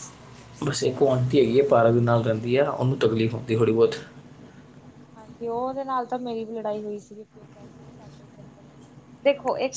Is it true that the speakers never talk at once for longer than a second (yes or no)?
yes